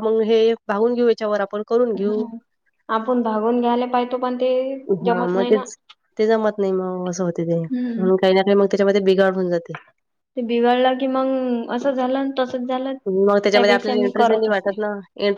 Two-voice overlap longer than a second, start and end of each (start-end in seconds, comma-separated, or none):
13.1-14.8